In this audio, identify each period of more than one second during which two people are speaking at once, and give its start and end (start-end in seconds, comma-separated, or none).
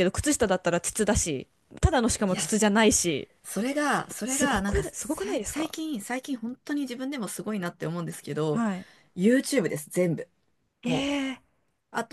4.2-5.7